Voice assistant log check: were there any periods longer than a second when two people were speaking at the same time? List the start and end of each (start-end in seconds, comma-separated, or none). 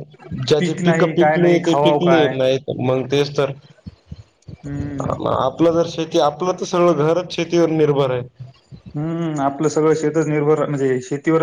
0.6-2.3